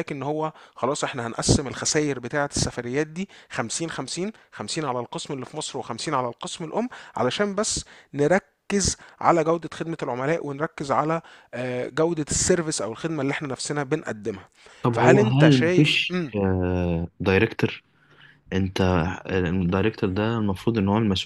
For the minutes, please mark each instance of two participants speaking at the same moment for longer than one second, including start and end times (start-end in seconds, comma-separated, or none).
14.9-16.2